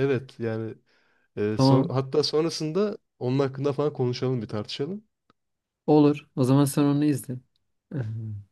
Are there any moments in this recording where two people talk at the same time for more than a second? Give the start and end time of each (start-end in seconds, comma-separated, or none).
none